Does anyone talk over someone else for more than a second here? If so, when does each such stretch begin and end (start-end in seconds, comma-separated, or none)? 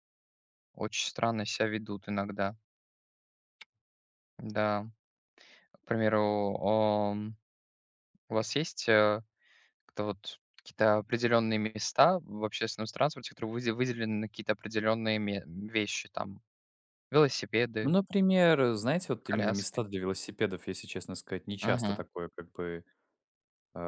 none